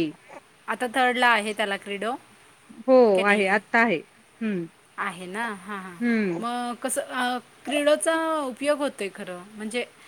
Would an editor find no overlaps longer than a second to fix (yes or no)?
yes